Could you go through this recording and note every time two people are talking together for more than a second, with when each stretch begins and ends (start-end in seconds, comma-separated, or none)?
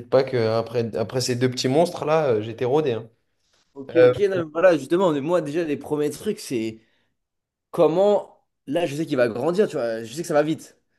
none